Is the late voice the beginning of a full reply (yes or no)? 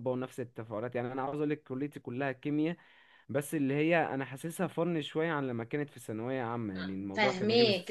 yes